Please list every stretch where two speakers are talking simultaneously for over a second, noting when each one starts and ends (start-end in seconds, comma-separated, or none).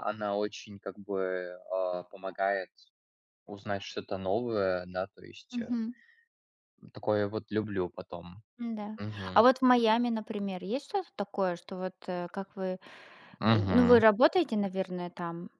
none